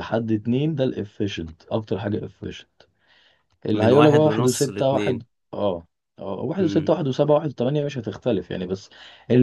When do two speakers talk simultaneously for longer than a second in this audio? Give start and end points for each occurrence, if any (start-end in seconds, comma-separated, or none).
3.7-5.2